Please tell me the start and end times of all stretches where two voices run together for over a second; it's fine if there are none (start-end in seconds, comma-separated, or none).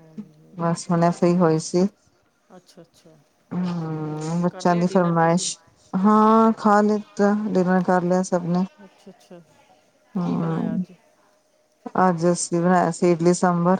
4.0-5.5